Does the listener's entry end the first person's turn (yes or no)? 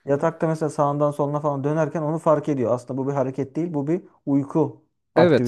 yes